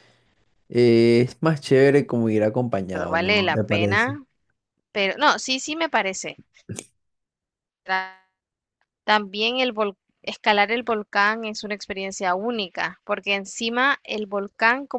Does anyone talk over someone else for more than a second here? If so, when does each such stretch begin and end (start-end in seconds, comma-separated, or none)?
2.9-4.2